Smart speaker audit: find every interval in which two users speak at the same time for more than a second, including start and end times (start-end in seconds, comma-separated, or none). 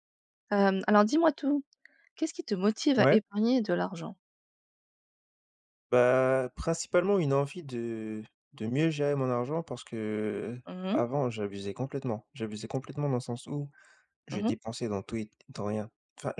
none